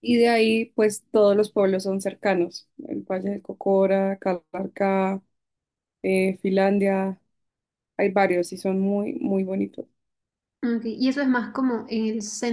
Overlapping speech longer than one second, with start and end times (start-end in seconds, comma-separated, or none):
none